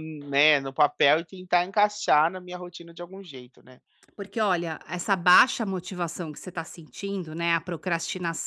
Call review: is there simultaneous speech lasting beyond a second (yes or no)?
no